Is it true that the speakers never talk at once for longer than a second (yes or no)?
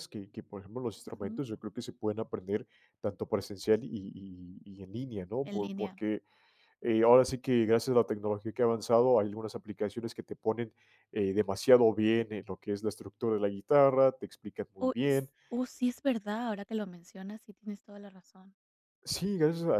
yes